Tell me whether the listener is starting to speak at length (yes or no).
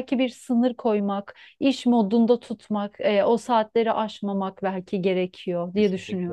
yes